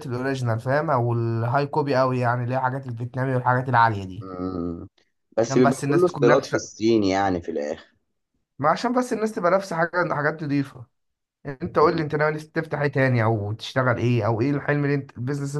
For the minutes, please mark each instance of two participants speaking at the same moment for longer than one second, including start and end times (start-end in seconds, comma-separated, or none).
5.4-6.8